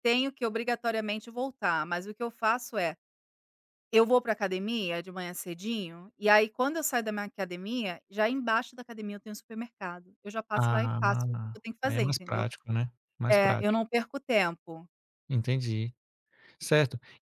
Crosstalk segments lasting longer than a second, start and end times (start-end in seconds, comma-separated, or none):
10.5-12.5